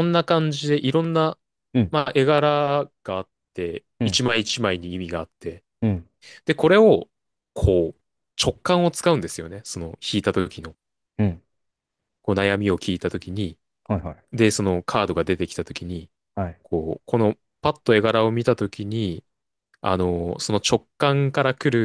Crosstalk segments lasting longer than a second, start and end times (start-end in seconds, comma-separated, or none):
none